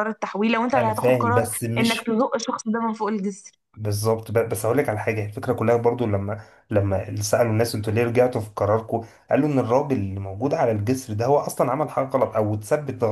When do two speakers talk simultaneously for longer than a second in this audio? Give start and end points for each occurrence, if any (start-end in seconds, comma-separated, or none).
0.8-2.2